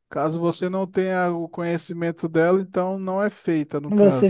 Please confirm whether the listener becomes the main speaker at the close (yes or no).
yes